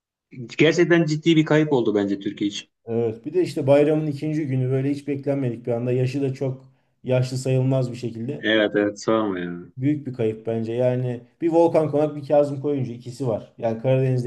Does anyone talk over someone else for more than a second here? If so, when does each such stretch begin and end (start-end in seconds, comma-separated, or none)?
none